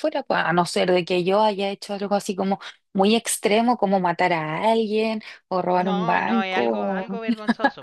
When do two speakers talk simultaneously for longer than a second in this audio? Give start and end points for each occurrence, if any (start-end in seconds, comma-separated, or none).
5.8-7.2